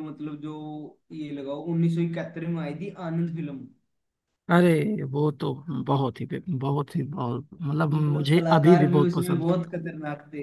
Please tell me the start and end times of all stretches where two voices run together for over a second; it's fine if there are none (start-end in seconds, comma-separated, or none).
7.9-9.5